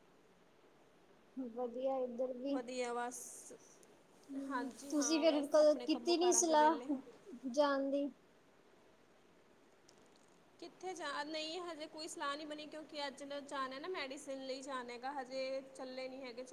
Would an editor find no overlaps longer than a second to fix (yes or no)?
no